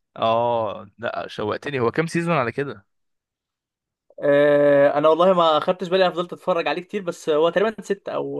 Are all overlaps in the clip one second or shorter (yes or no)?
yes